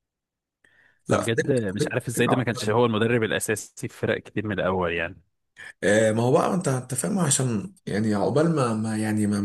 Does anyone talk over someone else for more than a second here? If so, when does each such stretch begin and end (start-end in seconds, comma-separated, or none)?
1.1-2.8